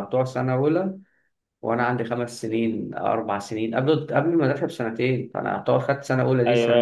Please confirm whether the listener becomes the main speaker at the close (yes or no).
yes